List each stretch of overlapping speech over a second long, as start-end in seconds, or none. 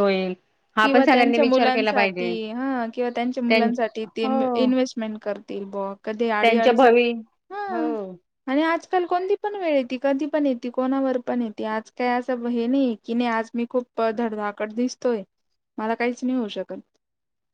0.8-2.3